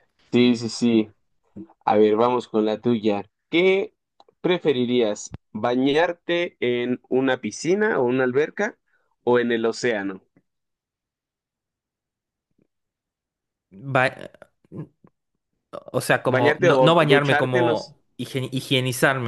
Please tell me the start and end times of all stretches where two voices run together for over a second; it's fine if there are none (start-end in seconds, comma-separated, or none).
16.3-17.9